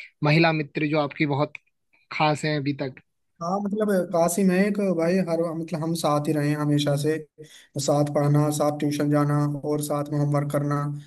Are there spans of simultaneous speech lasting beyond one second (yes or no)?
no